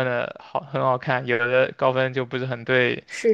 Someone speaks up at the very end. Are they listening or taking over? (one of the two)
taking over